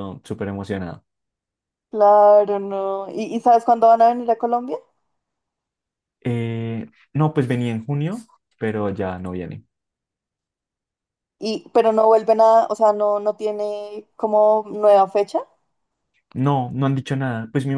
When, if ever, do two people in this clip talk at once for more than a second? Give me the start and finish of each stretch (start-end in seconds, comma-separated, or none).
none